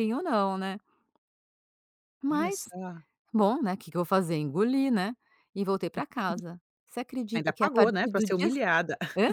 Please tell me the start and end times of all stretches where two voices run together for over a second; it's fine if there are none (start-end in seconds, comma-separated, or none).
7.3-8.6